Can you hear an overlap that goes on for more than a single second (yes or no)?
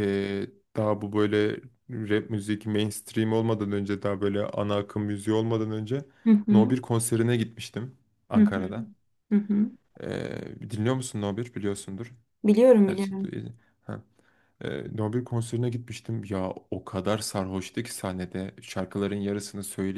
no